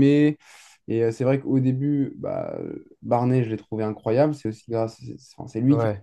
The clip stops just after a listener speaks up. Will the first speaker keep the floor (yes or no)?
yes